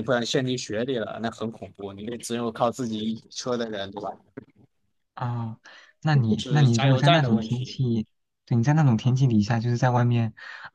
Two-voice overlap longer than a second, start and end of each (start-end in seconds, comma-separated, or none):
6.4-7.8